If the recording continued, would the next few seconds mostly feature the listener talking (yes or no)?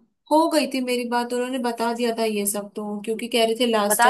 no